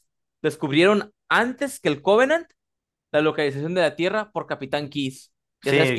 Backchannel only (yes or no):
no